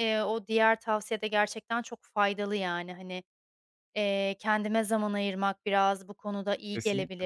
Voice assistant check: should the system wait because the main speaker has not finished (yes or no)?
yes